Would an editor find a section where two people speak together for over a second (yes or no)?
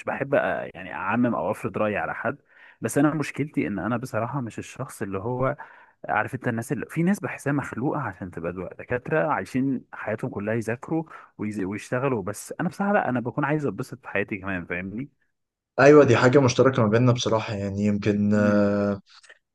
no